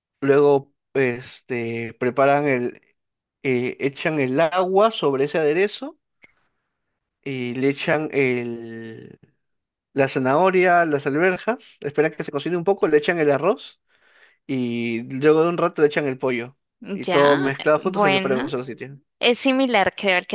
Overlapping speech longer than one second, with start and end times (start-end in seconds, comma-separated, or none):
16.8-18.5